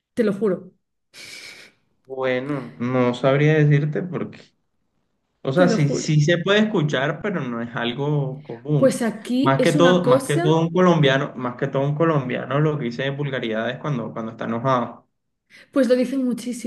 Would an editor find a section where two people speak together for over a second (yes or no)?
yes